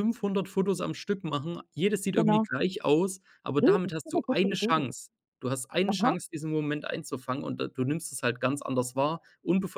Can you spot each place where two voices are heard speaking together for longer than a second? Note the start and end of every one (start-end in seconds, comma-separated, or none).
3.6-4.9